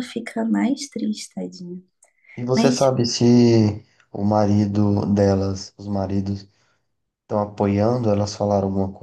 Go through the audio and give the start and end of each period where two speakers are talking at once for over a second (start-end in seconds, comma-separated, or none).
none